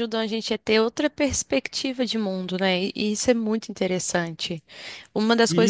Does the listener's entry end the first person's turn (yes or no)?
yes